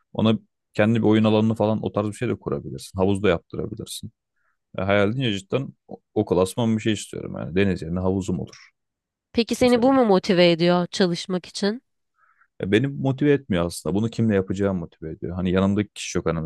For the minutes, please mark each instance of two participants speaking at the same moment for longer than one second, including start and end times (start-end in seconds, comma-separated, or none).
none